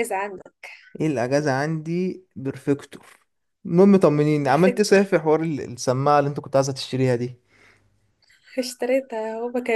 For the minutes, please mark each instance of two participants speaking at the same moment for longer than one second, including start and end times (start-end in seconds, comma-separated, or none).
none